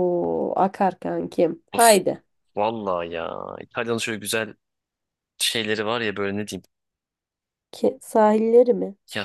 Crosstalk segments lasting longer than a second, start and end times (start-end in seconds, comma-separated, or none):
none